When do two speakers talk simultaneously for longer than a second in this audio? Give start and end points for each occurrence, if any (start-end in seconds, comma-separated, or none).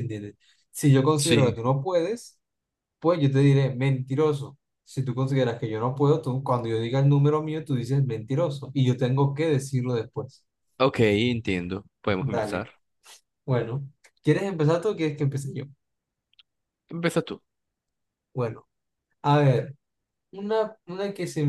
none